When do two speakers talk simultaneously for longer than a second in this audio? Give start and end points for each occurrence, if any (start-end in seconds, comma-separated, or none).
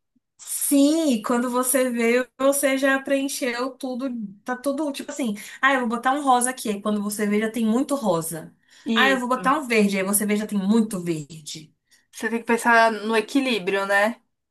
none